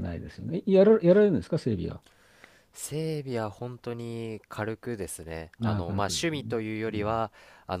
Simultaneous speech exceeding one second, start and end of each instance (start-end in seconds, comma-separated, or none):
5.6-7.2